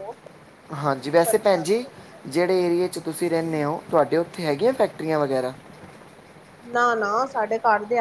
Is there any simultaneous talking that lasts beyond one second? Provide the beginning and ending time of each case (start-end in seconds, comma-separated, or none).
none